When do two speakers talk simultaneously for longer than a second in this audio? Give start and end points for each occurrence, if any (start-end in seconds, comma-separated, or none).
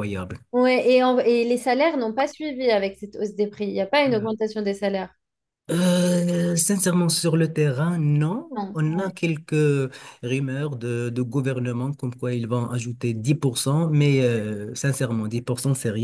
none